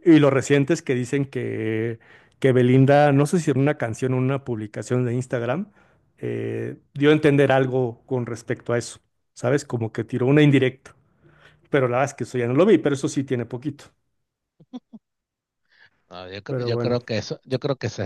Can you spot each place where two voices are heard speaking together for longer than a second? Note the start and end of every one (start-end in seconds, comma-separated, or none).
none